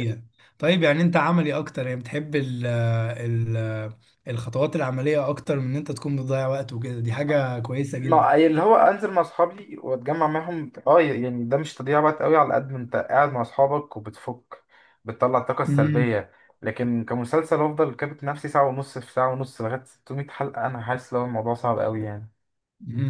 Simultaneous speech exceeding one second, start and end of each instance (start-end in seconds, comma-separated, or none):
none